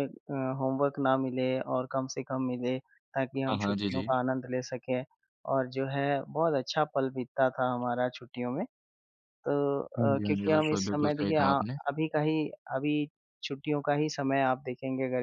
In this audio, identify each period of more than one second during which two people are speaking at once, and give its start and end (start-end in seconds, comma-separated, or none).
10.0-11.8